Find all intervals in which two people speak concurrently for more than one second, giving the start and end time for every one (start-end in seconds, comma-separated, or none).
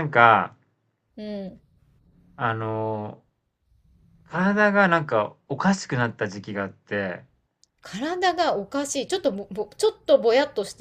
none